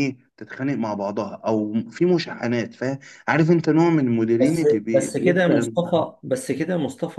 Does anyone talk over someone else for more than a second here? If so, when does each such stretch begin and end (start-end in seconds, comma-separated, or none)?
4.4-5.7